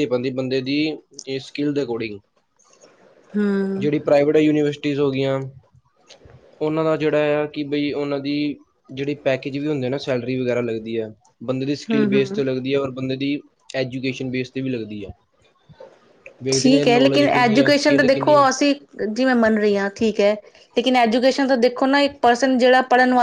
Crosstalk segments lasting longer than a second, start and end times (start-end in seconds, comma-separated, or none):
16.5-18.4